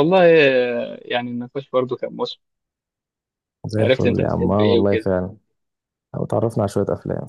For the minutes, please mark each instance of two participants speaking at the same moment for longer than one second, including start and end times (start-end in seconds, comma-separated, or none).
3.8-5.1